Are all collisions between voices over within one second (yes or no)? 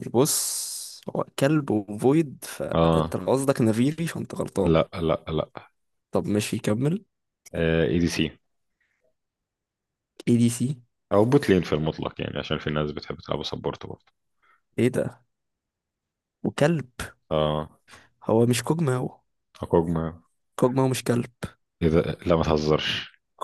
yes